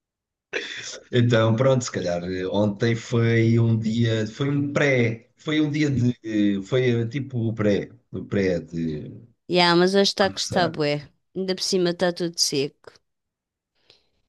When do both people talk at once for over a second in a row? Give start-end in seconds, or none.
none